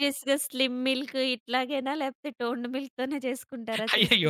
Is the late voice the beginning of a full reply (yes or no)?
yes